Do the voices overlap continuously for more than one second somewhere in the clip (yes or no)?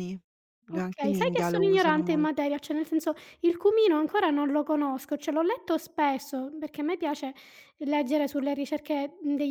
yes